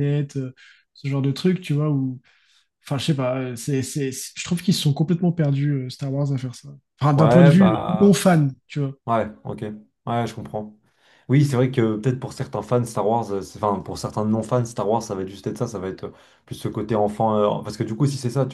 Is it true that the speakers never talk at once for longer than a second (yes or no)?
no